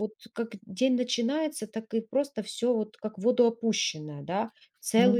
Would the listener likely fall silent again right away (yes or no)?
no